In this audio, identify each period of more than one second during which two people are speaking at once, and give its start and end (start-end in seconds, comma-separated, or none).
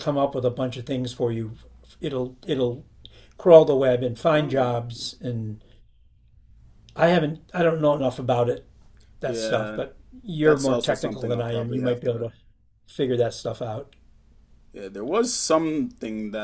10.4-12.3